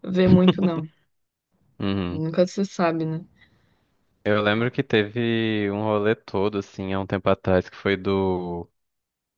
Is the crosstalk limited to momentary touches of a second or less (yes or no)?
yes